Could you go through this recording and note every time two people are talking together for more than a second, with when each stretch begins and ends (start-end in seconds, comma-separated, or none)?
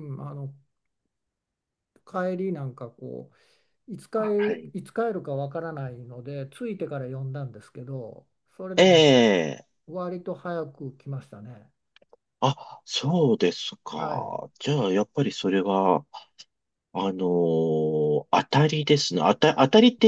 none